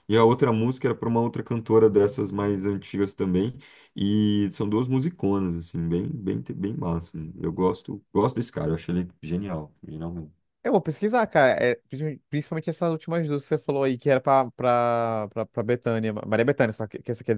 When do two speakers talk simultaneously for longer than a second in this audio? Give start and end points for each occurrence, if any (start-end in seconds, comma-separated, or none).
none